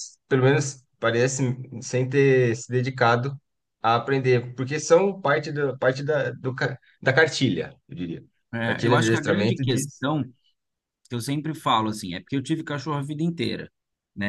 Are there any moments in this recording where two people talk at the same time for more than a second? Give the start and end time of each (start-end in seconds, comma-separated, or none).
8.6-10.0